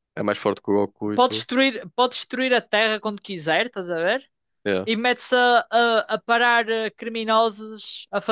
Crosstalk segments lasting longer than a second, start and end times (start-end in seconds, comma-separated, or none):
none